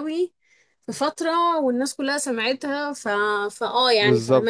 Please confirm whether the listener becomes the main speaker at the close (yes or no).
yes